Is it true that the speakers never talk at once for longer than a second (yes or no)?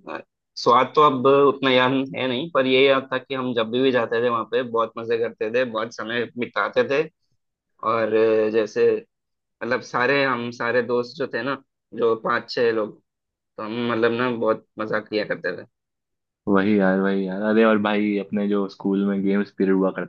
yes